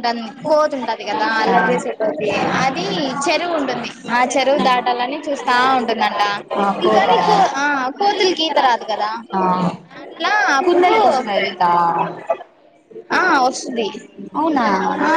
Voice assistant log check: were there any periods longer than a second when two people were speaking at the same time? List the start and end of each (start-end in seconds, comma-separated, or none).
none